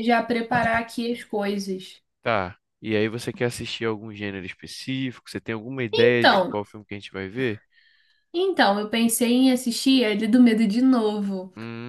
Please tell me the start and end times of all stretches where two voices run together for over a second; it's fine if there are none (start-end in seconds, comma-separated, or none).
none